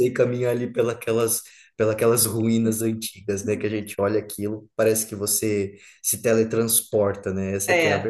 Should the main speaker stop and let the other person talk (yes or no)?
yes